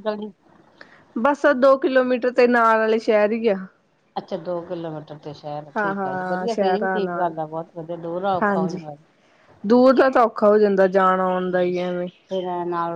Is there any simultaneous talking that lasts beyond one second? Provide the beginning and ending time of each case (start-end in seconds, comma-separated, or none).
5.8-7.3